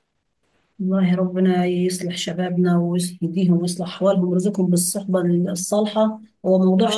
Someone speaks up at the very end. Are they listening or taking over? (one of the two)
listening